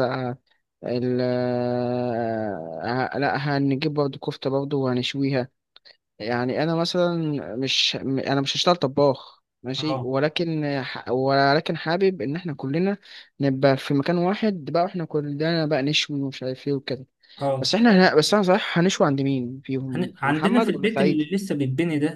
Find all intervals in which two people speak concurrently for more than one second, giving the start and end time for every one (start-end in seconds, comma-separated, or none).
19.9-21.3